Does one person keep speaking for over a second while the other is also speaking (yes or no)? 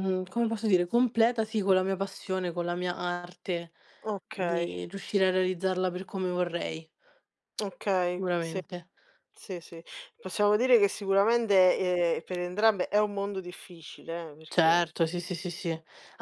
no